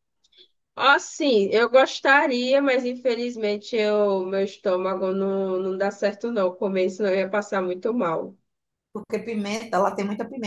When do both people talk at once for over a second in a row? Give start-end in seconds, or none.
none